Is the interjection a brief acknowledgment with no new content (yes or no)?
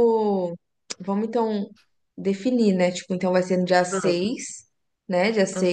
yes